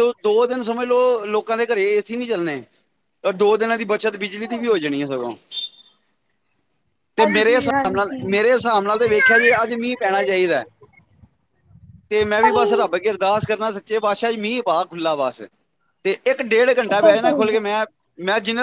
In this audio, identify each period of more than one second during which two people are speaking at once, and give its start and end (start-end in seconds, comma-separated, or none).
7.2-8.4